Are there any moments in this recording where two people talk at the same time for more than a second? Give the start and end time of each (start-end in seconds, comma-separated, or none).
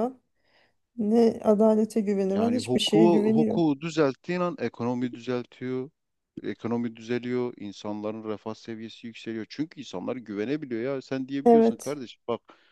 2.3-3.6